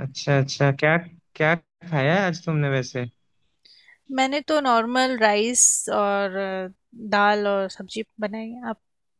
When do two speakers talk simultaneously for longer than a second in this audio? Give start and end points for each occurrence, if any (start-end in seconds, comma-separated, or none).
none